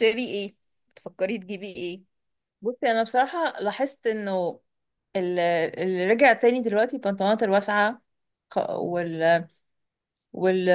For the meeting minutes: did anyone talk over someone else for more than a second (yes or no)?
no